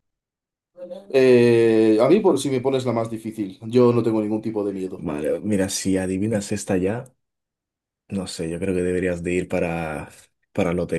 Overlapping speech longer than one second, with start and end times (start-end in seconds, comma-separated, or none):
none